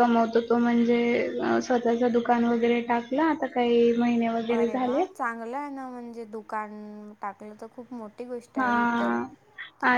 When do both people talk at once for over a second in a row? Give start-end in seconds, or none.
none